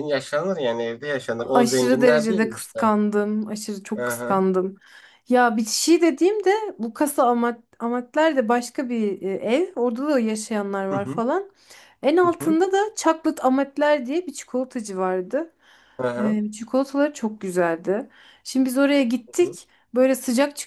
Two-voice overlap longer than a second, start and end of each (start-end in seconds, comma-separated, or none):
1.4-2.9